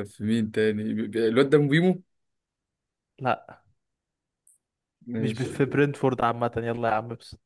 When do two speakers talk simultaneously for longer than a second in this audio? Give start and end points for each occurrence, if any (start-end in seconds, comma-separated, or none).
none